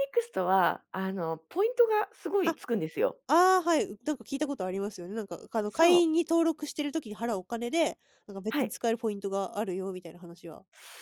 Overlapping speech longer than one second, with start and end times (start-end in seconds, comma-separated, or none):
none